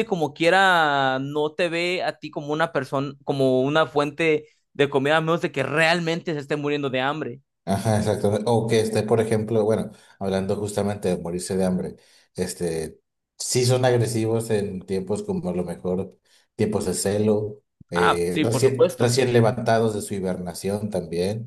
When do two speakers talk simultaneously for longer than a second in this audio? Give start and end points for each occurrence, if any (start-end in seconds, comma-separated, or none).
17.9-19.2